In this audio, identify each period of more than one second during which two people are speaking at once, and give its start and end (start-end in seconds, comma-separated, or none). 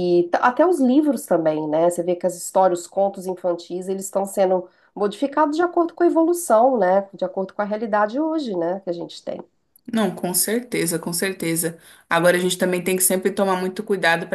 none